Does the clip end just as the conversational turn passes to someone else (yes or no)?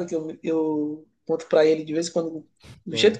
no